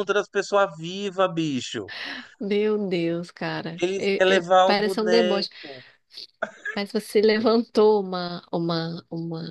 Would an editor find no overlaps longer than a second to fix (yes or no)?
no